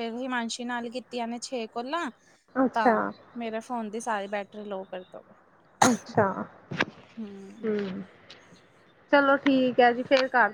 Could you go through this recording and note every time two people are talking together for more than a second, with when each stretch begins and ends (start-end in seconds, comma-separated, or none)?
none